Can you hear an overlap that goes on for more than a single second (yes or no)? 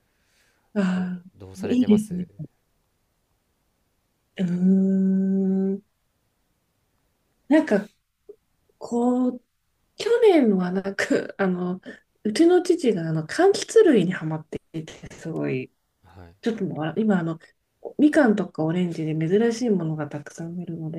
yes